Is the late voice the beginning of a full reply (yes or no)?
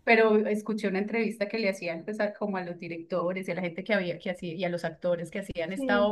no